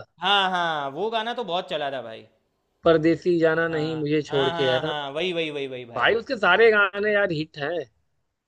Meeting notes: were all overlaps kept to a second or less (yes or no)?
no